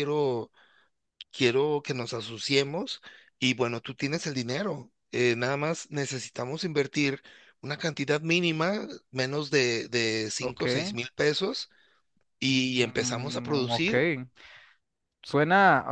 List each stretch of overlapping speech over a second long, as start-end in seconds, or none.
12.5-13.9